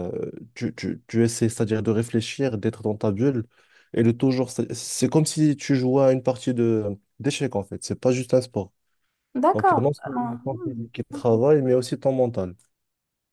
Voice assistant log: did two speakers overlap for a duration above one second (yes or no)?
yes